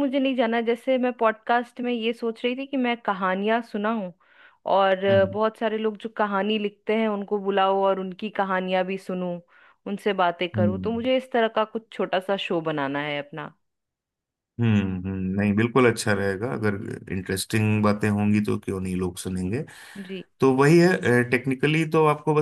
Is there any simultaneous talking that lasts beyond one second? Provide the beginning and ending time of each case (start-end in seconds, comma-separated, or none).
none